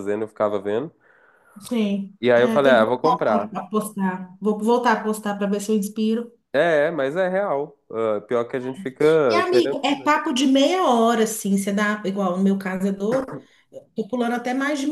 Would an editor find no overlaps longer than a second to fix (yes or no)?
no